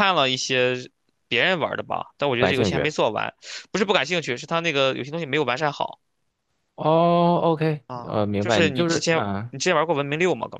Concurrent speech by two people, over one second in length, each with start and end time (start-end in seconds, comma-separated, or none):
7.9-9.5